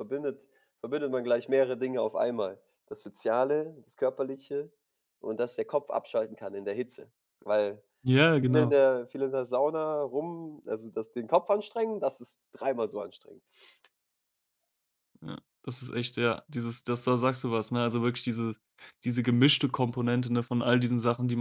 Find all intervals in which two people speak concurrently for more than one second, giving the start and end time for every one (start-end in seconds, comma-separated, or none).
none